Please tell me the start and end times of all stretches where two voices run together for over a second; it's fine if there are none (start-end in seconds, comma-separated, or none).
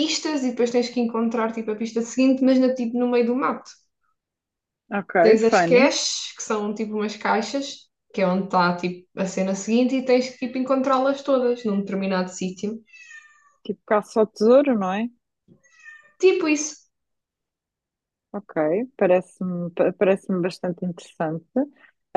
none